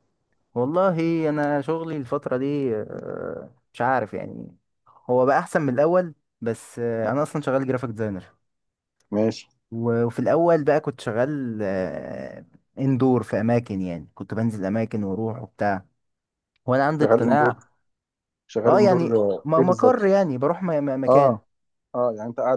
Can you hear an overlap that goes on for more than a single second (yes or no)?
yes